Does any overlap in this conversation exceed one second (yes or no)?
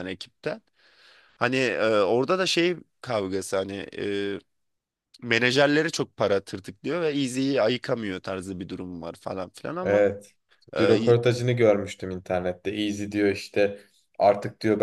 no